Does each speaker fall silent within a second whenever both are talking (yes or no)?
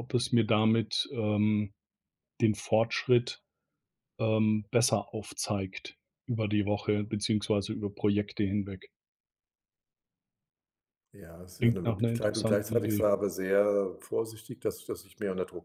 no